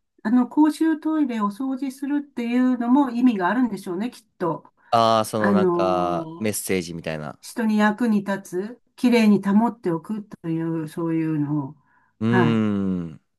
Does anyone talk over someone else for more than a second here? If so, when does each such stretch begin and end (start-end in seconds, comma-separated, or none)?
5.4-6.6